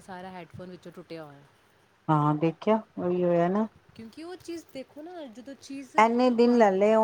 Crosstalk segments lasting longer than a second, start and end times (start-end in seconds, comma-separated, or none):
none